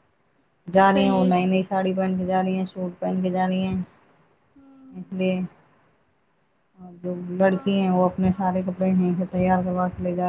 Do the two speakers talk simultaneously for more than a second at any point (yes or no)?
yes